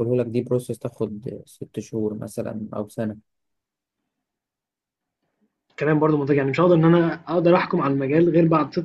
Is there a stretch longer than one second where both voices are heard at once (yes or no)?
no